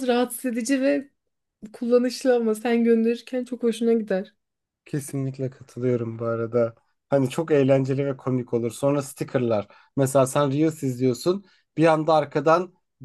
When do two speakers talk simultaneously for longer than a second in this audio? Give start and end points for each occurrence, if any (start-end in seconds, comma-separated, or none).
none